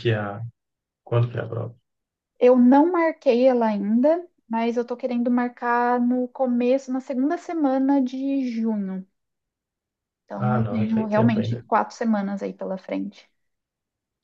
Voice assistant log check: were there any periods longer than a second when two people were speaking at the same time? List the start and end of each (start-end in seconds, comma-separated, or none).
10.3-11.6